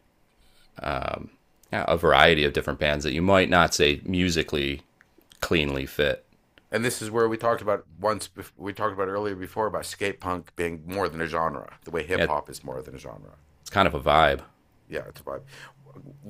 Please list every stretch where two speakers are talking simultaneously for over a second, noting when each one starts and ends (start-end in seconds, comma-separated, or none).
none